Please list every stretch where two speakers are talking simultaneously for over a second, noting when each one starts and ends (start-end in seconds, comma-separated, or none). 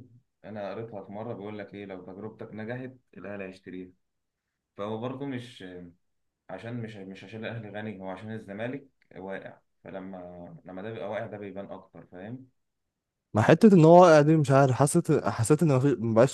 none